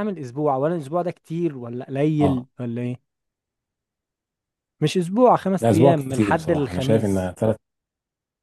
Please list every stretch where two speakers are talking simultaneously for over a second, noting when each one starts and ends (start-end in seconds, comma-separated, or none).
5.6-7.3